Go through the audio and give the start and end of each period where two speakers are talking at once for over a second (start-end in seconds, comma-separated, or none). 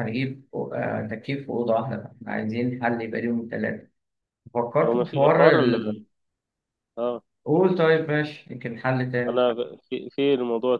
4.8-6.0